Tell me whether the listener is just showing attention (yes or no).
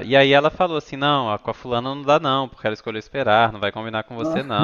yes